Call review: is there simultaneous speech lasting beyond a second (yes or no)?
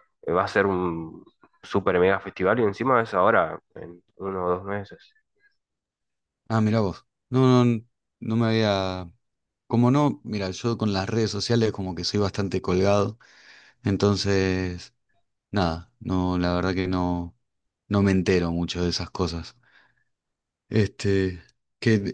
no